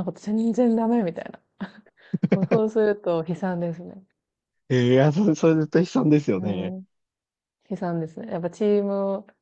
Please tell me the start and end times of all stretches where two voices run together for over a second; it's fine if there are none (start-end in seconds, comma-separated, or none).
none